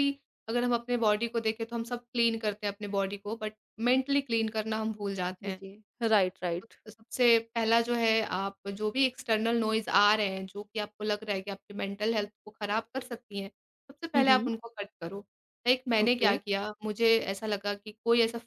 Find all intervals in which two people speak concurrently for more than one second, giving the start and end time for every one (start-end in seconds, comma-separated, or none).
none